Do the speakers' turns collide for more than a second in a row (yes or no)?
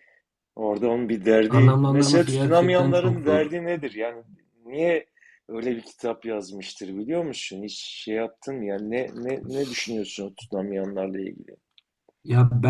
yes